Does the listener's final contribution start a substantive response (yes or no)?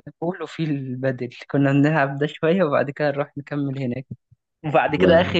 no